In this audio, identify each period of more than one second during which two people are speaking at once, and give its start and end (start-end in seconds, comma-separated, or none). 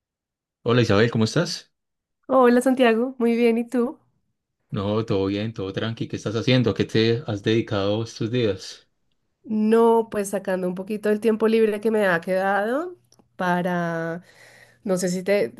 none